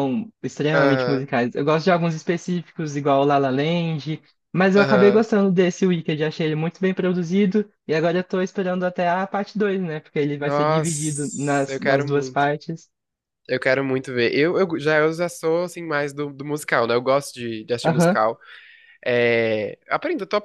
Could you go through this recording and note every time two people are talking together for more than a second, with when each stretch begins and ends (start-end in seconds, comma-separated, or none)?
10.4-12.4